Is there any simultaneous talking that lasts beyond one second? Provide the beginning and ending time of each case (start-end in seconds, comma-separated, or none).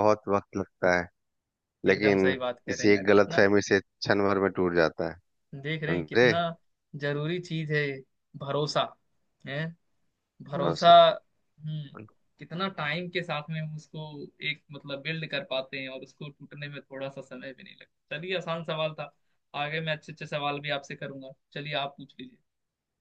1.9-3.5